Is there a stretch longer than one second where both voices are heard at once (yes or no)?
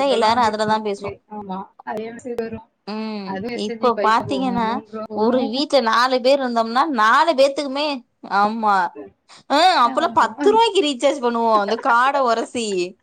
no